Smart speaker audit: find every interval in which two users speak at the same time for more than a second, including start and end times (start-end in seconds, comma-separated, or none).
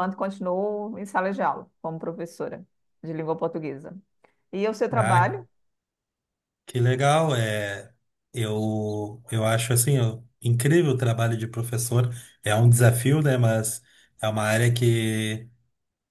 none